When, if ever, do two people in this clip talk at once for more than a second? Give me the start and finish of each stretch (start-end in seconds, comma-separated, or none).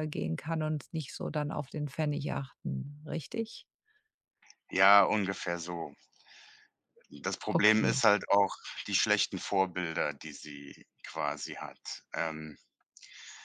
none